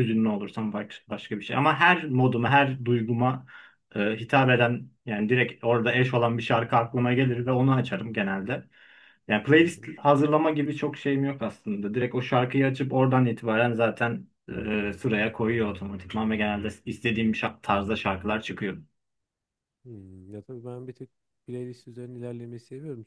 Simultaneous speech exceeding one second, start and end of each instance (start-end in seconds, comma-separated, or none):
none